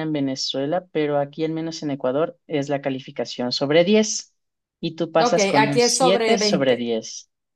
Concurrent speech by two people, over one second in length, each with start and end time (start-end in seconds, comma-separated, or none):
5.2-6.9